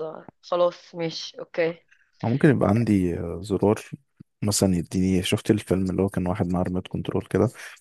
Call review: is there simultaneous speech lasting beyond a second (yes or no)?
no